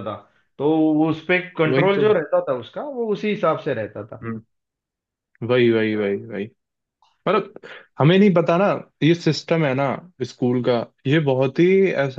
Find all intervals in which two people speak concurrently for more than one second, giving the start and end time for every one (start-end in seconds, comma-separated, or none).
none